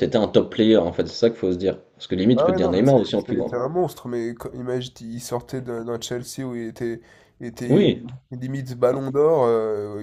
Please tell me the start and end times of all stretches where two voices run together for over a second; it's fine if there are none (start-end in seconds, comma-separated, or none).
2.3-3.6